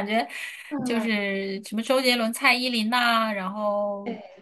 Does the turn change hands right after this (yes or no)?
no